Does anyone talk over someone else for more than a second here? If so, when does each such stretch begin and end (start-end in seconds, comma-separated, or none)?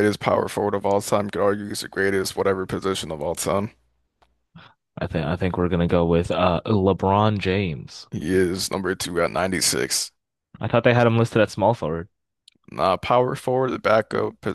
none